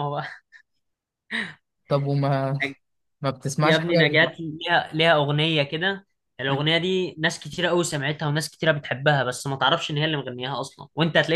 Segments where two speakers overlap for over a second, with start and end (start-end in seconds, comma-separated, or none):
none